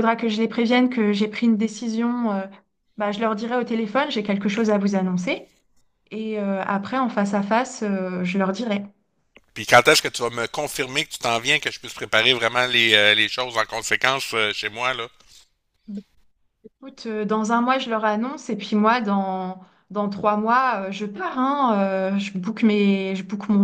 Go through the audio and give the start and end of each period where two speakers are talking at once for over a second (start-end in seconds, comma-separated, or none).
none